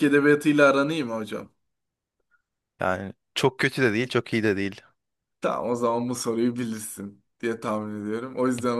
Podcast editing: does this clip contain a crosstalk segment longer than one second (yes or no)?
no